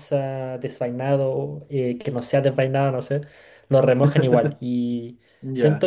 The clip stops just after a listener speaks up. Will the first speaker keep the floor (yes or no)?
yes